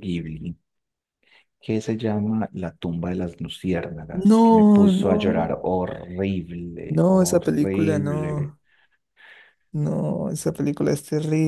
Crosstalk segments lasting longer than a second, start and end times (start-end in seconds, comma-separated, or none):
4.1-5.5, 6.8-8.6